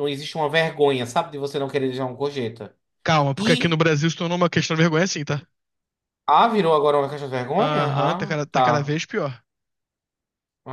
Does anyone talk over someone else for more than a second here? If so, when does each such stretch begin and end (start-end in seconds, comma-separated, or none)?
7.6-9.0